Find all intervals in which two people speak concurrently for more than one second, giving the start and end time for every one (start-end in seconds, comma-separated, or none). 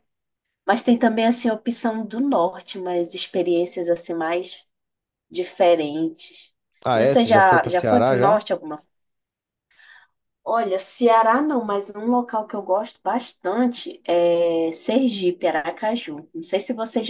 6.9-8.4